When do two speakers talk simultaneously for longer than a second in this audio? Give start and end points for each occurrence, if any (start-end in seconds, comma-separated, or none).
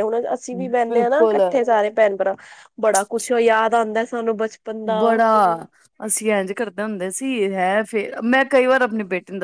none